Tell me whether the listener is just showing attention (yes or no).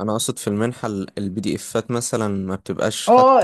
no